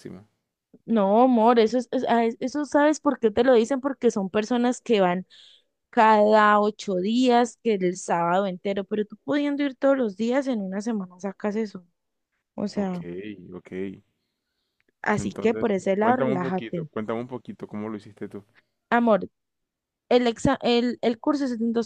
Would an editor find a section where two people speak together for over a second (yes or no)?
yes